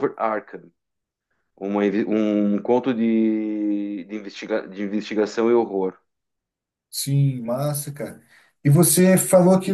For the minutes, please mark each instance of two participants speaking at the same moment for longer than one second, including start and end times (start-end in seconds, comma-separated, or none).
none